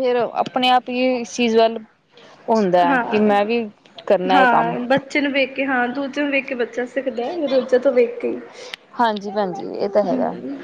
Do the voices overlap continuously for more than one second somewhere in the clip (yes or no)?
no